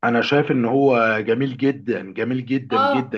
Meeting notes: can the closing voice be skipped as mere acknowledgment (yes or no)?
no